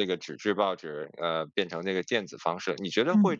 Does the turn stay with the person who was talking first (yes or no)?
yes